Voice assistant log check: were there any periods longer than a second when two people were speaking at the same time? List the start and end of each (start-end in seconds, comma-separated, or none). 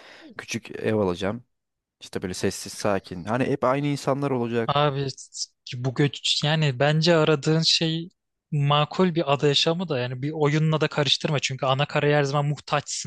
none